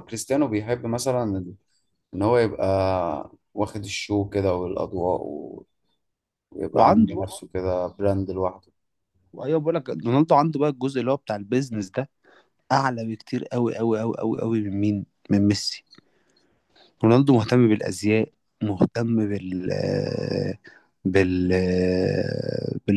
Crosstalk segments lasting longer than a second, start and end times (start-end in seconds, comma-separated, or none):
none